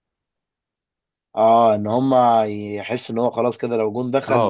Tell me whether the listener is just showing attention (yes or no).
no